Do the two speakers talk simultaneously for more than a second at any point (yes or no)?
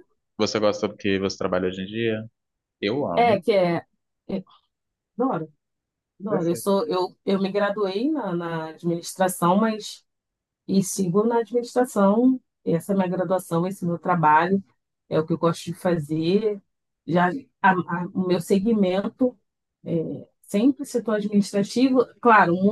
no